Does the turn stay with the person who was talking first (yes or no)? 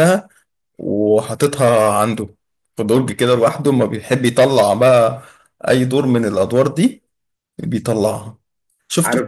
no